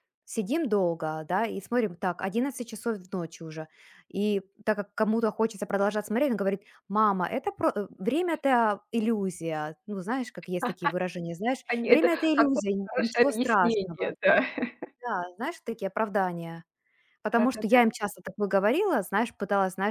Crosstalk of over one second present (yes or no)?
yes